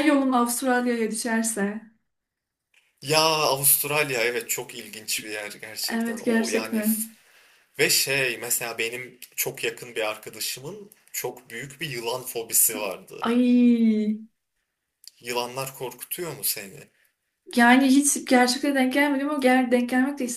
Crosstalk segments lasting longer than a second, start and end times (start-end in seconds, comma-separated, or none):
5.9-7.1